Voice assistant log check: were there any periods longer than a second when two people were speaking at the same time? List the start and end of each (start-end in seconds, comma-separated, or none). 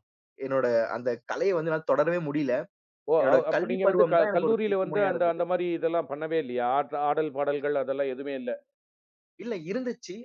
3.2-5.4